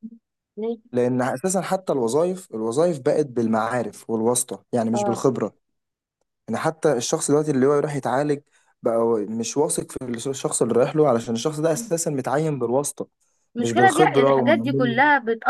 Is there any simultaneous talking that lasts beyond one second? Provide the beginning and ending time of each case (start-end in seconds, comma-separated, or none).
13.6-15.0